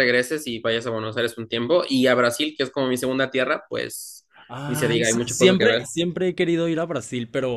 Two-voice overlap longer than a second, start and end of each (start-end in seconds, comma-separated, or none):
4.7-5.9